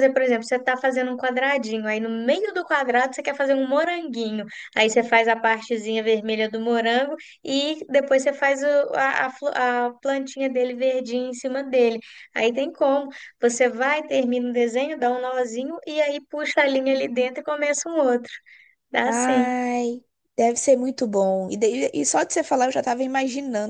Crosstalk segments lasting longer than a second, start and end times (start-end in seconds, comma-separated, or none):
none